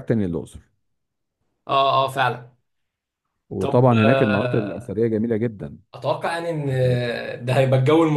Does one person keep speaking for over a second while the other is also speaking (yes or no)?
yes